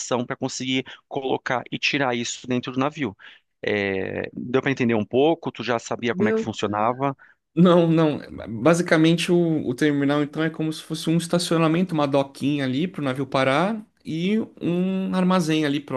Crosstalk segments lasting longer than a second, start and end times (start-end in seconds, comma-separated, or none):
none